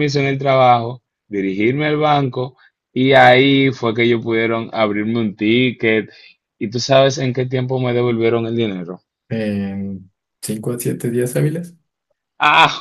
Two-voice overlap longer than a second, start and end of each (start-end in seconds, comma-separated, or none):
none